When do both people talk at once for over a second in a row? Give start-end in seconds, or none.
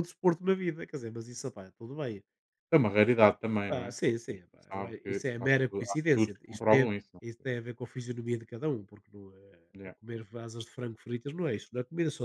3.7-7.5